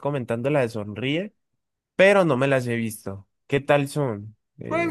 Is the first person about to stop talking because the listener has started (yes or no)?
yes